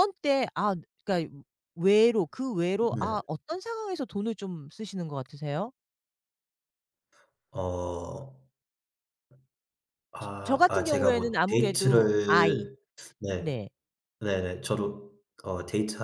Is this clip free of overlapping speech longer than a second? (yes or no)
no